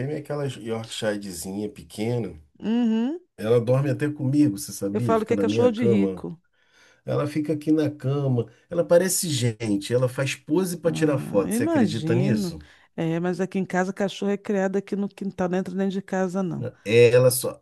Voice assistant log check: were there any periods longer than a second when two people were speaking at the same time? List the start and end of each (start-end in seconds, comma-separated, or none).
4.9-6.2, 10.8-12.6